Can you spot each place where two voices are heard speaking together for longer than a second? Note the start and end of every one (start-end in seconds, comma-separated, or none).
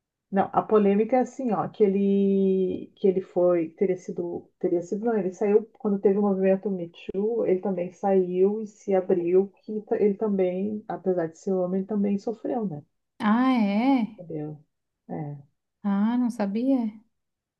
none